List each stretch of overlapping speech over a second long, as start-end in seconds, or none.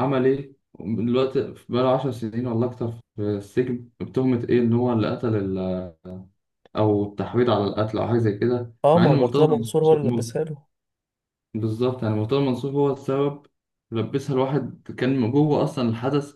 8.8-10.3